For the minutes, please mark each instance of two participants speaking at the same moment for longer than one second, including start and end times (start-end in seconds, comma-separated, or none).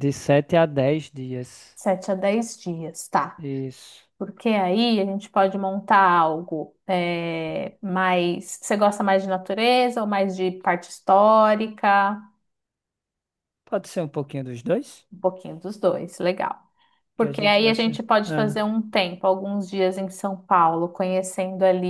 17.2-18.6